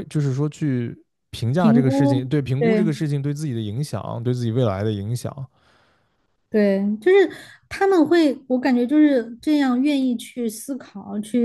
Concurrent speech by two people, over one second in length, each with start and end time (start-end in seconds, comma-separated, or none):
1.6-2.9